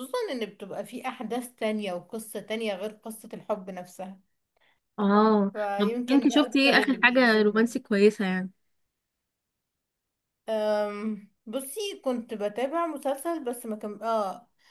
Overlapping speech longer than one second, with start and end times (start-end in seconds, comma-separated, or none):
5.5-7.7